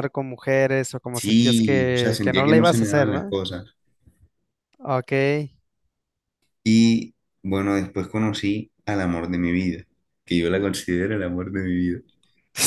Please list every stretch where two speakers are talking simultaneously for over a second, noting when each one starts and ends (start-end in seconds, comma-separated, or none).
1.1-3.4